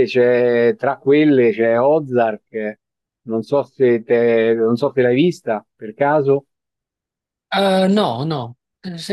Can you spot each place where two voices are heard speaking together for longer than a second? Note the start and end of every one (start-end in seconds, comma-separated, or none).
none